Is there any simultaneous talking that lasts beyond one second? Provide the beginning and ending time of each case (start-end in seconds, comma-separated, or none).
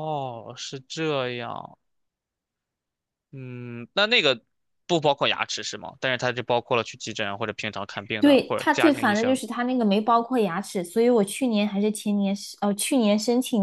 8.2-9.4